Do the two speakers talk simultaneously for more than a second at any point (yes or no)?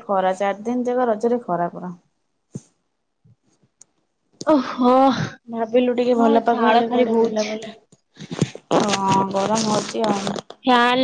yes